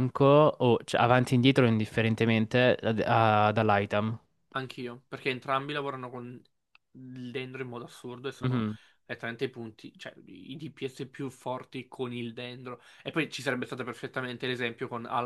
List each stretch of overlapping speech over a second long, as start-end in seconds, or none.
none